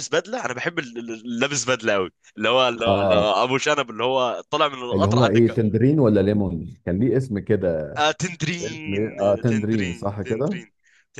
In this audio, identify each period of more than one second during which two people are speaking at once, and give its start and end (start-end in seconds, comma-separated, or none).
8.6-10.6